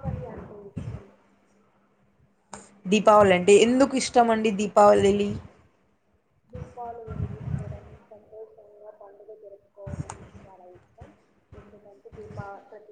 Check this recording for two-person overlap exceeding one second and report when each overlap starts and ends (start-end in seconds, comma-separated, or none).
none